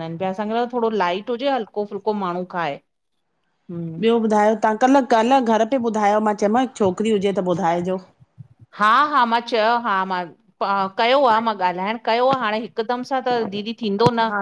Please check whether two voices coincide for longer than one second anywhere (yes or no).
no